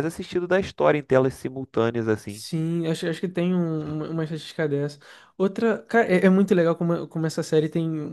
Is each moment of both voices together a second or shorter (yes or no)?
yes